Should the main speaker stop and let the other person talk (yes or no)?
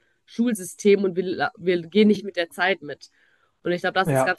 no